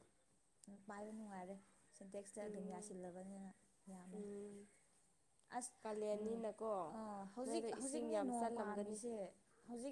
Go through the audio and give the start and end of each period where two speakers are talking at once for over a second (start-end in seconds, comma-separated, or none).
7.5-9.0